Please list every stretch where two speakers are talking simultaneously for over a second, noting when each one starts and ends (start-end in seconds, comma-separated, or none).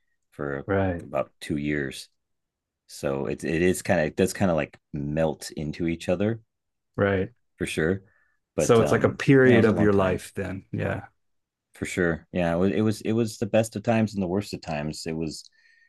8.6-10.2